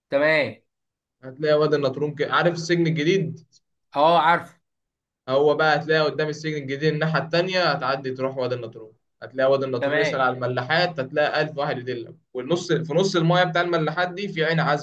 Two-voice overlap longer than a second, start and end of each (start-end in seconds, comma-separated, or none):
none